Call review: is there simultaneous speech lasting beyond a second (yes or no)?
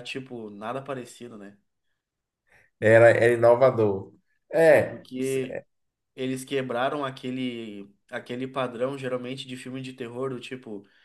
no